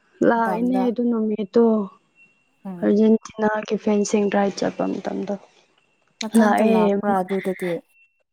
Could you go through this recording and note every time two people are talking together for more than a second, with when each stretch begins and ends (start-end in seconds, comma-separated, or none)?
none